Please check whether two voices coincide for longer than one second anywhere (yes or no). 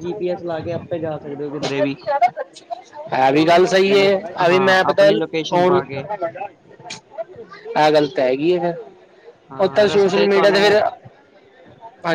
yes